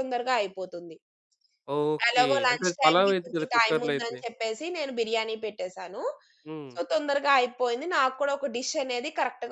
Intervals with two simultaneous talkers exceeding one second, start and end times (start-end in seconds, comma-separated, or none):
2.1-4.2